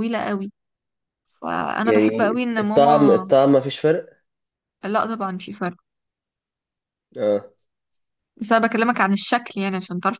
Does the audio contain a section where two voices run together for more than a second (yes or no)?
yes